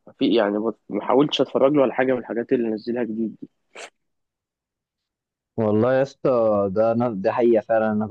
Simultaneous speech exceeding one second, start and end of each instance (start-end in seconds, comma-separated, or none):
none